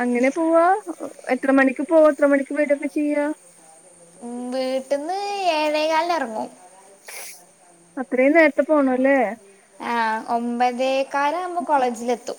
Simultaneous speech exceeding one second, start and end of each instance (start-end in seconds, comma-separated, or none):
none